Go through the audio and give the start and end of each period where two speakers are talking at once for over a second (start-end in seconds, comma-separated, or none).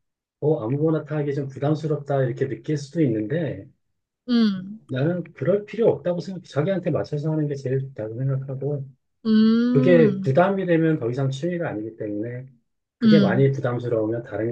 none